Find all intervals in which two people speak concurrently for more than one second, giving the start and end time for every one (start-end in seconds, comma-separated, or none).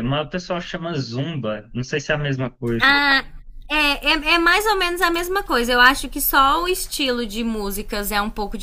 none